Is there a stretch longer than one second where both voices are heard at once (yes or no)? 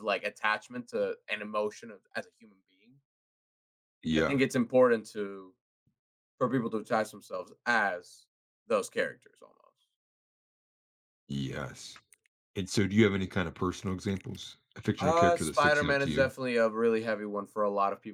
yes